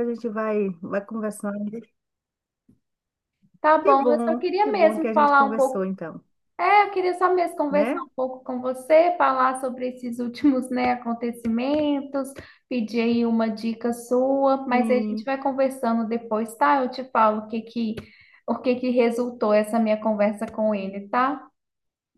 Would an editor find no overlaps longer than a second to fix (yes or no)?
no